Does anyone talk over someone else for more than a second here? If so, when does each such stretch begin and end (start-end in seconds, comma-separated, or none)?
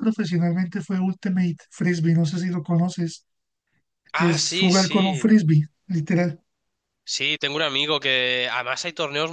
4.1-5.3